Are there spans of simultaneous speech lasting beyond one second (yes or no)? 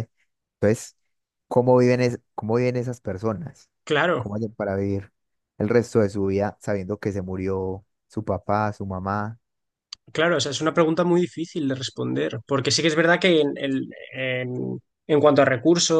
no